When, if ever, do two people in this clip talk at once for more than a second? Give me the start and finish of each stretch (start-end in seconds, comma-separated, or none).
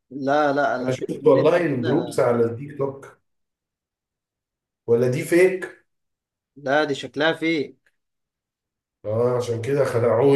0.8-2.2